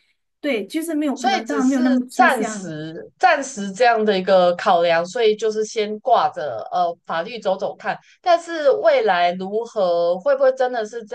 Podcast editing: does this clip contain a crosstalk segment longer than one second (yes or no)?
yes